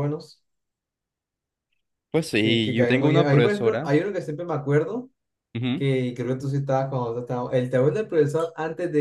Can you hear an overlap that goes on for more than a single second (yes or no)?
yes